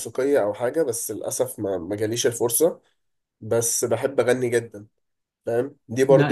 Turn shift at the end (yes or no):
no